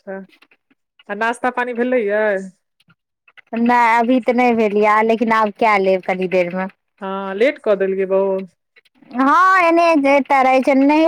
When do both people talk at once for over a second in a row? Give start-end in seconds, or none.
none